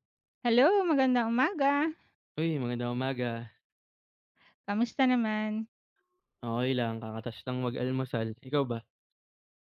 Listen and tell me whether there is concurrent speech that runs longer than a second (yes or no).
no